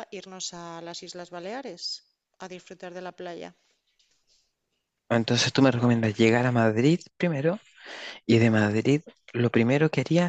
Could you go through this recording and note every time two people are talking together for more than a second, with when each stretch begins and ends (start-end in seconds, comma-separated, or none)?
none